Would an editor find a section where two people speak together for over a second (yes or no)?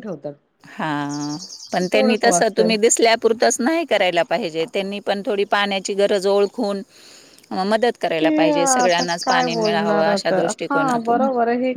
yes